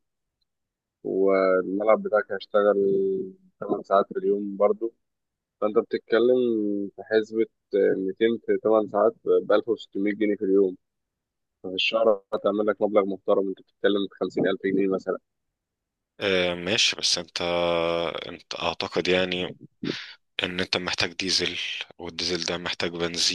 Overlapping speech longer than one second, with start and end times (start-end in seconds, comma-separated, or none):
none